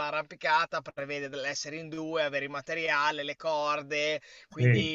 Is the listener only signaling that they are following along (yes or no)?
yes